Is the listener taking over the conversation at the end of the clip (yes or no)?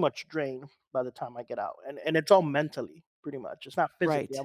no